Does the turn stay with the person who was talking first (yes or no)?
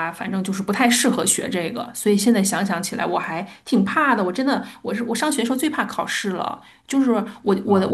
yes